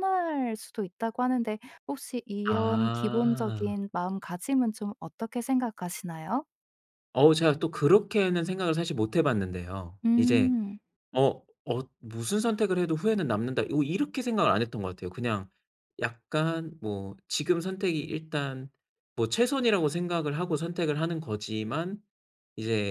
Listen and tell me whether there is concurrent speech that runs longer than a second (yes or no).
yes